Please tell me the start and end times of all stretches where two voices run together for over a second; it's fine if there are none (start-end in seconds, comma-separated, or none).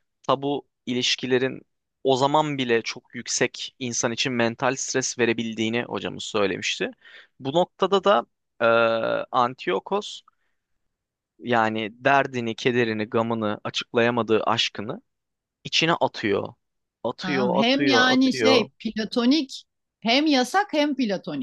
17.2-18.7